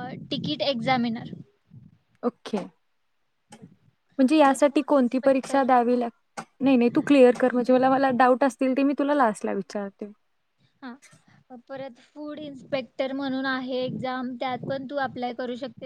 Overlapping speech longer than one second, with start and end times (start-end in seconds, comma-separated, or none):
4.4-5.7